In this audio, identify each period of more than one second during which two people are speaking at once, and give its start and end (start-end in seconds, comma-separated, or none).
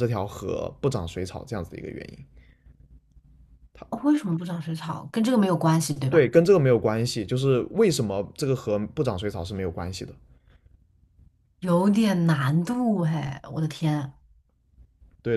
none